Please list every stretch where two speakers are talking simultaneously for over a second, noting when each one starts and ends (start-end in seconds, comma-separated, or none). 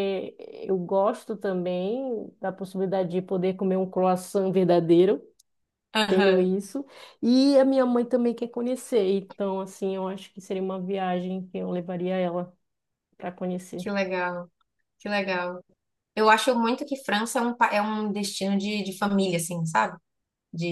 none